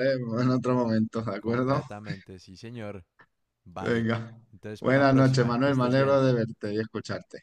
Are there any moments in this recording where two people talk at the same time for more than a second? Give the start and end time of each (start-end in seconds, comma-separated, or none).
4.8-6.2